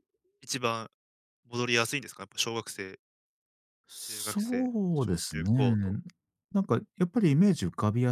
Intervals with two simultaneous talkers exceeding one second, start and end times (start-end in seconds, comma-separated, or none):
4.0-6.0